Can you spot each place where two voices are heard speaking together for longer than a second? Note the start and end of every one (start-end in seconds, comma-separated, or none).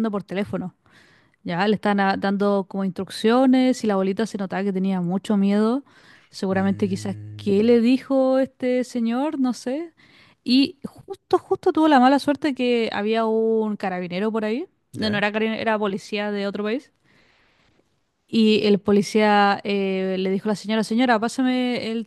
6.5-7.8